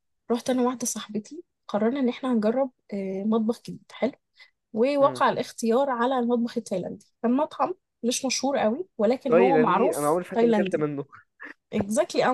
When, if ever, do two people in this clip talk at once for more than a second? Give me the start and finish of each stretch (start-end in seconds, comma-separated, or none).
9.3-10.9